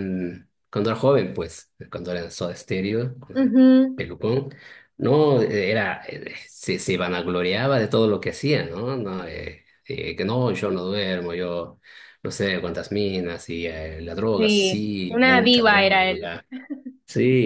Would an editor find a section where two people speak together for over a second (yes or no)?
yes